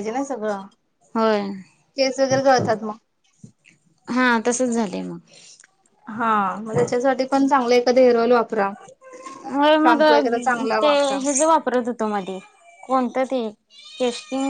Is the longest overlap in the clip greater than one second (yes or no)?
no